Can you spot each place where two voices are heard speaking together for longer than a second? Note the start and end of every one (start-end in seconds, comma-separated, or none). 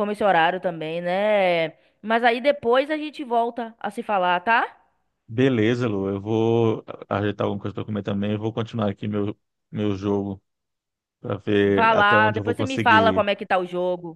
11.7-13.2